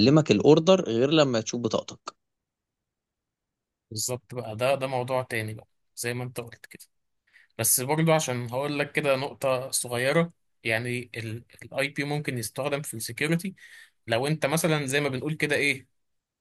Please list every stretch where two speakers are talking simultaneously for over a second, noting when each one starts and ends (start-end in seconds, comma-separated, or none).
none